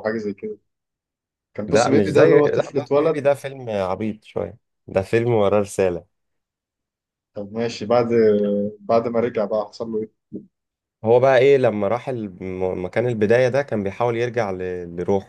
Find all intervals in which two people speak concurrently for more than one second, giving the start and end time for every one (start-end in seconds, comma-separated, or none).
1.7-3.2